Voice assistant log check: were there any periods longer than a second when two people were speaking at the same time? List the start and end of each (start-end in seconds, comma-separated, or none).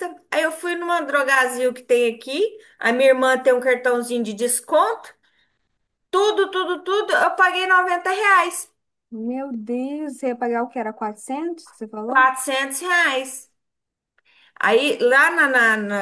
none